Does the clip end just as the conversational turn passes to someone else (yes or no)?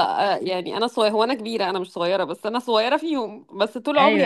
no